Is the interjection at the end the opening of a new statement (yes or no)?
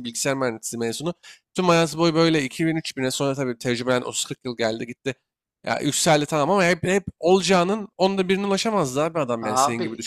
yes